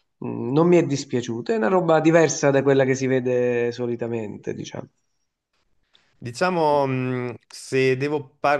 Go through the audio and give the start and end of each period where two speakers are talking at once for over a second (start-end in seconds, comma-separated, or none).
none